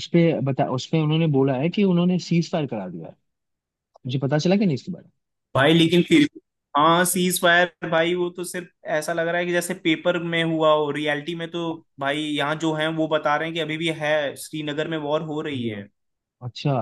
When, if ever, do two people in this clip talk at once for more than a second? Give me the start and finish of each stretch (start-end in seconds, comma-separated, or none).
none